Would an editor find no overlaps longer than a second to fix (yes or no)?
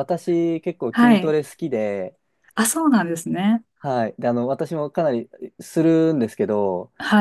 yes